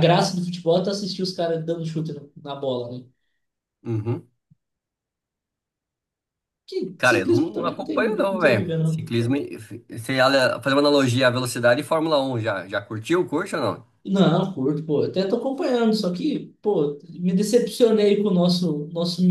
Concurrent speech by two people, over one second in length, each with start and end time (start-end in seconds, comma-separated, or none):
7.0-9.0